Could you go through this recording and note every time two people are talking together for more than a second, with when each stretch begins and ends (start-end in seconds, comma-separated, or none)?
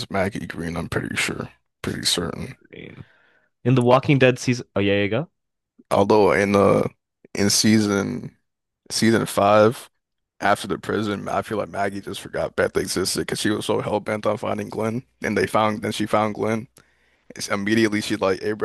none